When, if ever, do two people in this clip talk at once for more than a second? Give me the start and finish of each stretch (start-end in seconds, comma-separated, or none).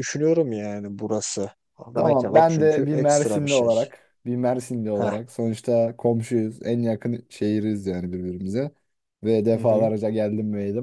1.9-3.7